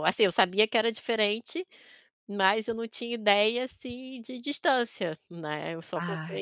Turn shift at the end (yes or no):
no